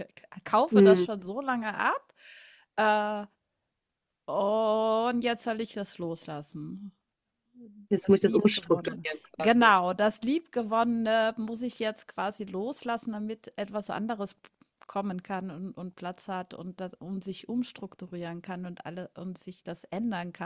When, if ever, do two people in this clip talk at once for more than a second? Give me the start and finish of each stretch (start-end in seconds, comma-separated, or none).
8.0-9.8